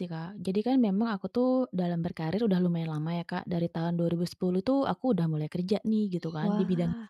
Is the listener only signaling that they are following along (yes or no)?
yes